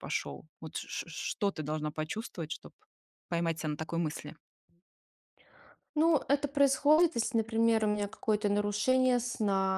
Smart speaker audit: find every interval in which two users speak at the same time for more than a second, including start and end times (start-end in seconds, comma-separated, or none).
none